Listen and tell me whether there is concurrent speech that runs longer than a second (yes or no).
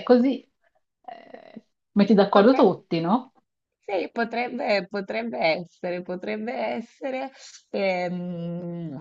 no